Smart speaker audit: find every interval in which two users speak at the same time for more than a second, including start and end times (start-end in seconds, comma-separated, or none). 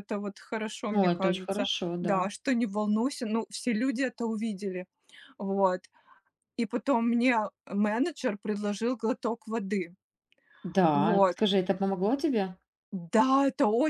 0.9-2.3